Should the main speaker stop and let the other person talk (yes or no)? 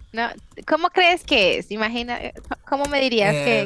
no